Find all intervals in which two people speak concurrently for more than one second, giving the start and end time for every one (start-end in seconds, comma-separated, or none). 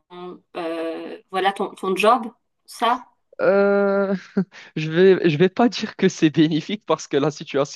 none